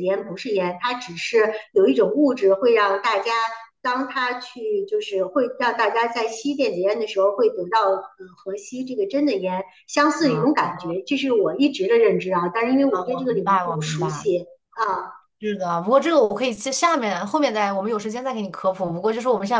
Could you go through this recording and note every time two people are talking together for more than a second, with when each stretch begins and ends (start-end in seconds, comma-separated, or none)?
12.9-14.3